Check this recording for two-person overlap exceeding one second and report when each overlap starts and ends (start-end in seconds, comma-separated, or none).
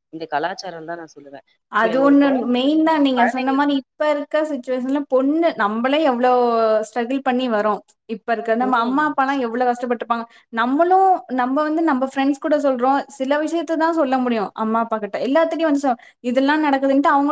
none